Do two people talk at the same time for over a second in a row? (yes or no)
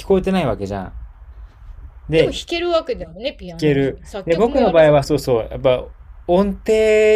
yes